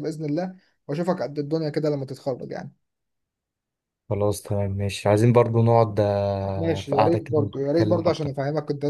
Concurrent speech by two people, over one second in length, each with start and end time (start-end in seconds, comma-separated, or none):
6.5-8.3